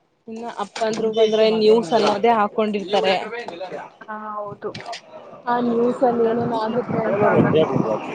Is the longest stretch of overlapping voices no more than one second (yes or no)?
no